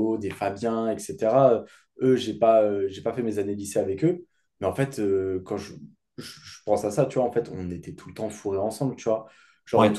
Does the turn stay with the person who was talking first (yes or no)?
yes